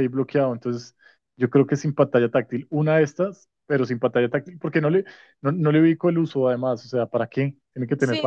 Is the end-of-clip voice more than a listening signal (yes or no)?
yes